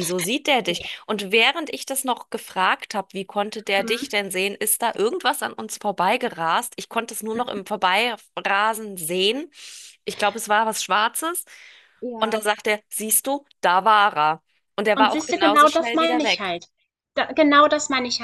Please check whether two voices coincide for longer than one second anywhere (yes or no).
yes